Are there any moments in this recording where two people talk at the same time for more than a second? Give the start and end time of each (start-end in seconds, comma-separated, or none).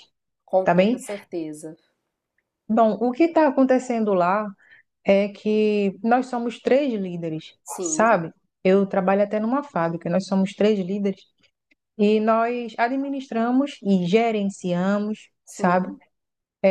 none